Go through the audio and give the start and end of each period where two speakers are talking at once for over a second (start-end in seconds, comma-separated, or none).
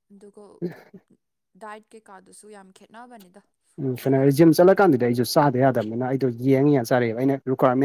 none